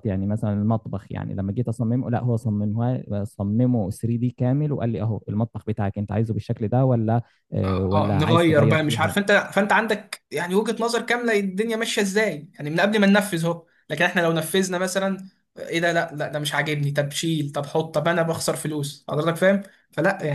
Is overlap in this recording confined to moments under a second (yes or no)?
no